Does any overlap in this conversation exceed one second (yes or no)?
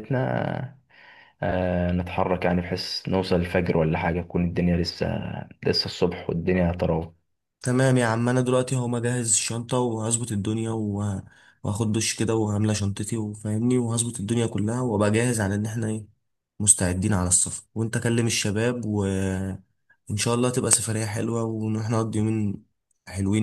no